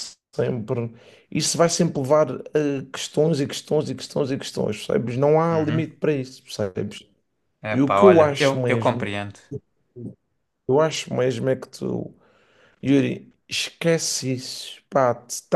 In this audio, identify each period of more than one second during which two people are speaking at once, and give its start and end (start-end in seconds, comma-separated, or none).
7.7-9.1